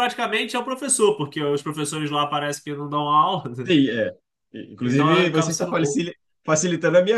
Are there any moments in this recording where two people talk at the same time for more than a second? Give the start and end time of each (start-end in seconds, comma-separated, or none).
4.8-6.0